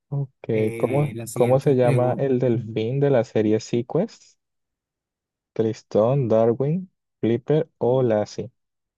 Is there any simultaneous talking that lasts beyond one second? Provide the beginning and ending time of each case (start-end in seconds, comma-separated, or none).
0.5-2.3